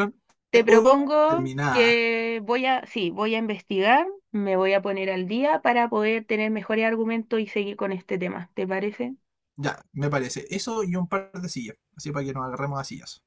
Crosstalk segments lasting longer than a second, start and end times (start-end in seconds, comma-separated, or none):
0.5-2.0